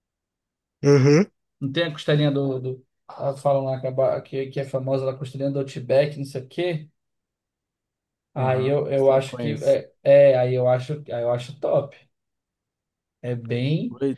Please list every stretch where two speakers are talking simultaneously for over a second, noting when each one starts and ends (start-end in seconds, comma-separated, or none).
8.3-9.8